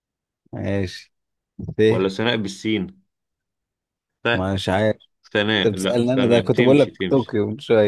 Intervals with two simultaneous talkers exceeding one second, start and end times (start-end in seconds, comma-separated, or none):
5.7-7.4